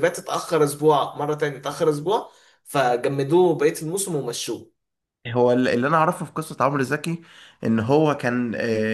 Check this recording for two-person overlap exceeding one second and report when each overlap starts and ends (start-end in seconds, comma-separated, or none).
none